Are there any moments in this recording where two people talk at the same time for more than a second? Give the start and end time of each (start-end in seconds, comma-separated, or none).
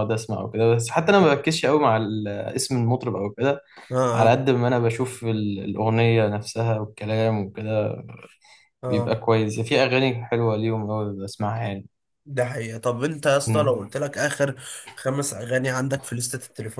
none